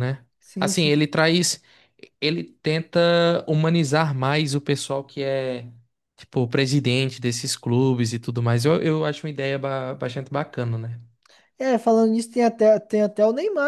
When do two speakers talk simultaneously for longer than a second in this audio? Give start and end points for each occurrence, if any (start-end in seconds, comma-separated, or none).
none